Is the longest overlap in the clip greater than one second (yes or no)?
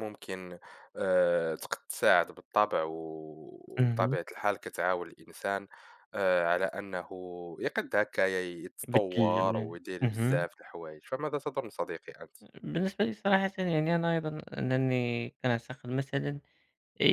yes